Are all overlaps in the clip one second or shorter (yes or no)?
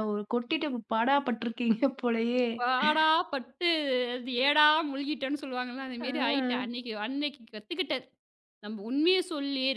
yes